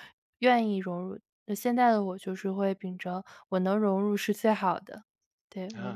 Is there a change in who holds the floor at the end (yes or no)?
yes